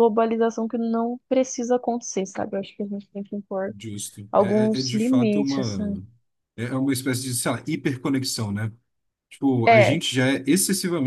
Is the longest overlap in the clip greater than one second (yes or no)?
yes